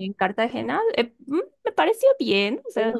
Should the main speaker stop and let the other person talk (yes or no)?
yes